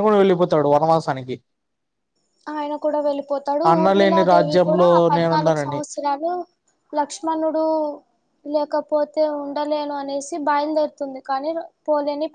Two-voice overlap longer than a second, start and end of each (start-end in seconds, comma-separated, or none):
3.7-5.8